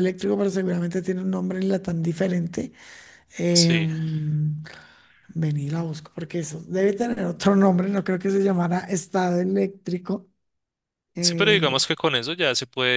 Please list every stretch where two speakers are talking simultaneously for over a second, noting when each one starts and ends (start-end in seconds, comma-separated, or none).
none